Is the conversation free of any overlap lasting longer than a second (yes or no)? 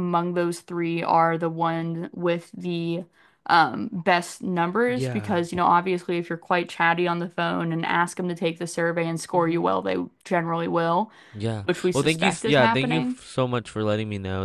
no